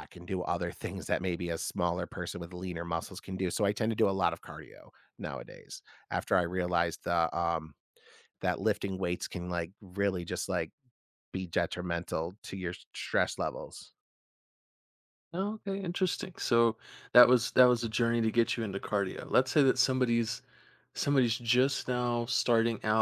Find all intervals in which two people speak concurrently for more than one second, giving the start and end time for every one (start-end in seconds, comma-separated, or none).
none